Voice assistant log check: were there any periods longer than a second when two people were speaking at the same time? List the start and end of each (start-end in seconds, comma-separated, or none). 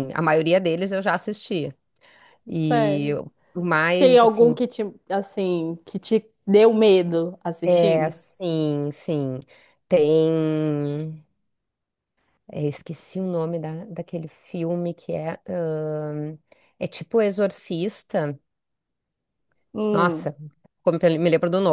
none